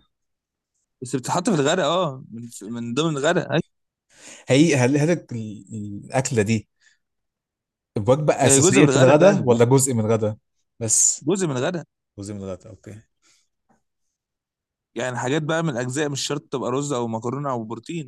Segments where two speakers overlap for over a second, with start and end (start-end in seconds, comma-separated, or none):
8.4-9.7